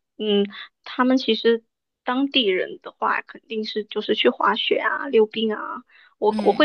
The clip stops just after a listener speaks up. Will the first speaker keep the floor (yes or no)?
yes